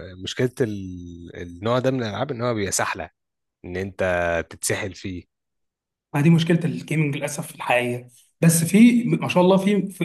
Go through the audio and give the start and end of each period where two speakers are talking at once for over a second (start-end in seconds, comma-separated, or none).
none